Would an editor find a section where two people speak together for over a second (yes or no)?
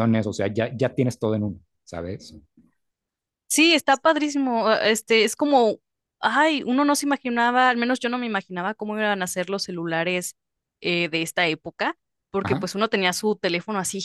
no